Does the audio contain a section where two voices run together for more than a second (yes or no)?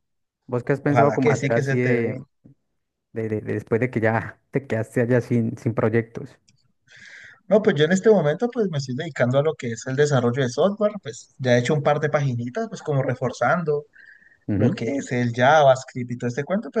yes